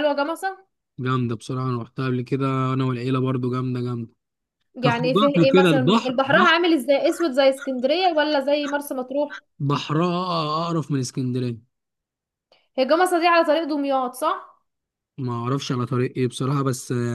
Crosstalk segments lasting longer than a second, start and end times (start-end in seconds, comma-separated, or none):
4.8-6.5